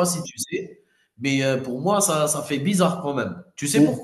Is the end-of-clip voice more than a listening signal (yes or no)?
no